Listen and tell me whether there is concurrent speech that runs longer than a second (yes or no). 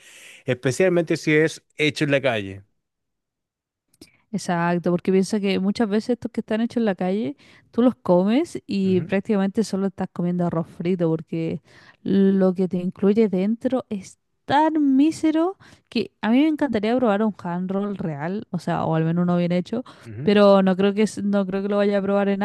no